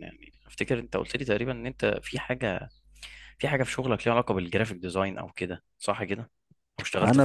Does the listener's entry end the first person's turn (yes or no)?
yes